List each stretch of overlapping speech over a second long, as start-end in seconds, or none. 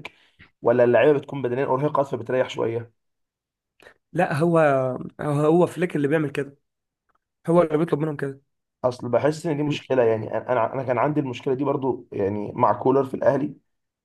none